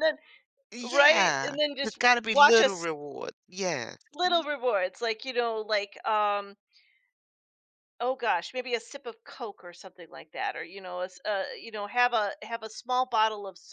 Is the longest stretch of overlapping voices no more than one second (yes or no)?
no